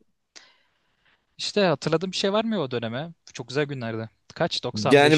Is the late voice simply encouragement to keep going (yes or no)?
no